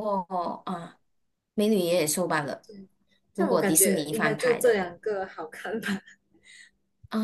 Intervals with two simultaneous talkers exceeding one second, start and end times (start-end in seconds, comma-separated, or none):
3.4-4.8